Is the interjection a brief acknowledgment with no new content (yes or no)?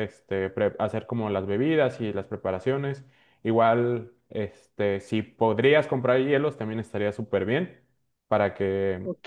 no